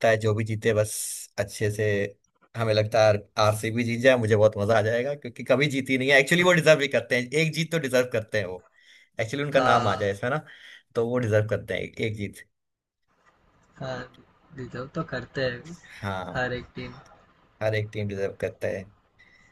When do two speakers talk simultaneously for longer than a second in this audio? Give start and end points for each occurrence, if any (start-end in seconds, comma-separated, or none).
none